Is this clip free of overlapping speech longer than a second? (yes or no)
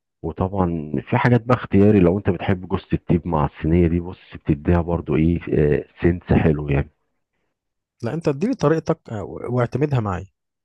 yes